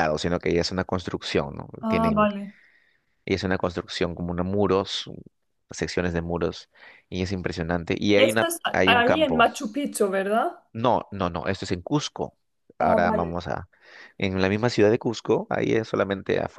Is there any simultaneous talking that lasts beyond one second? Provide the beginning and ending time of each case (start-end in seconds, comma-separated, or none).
8.1-9.4